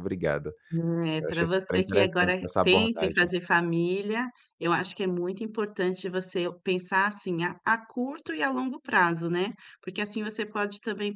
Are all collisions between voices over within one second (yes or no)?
no